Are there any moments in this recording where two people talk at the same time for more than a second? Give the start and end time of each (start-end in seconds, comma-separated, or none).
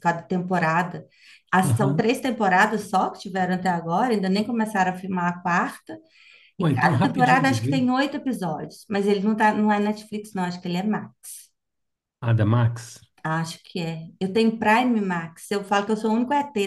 6.6-7.8